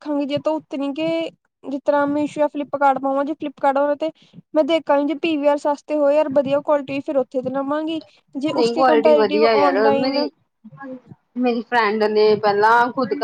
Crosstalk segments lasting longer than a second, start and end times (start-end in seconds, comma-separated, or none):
8.6-10.3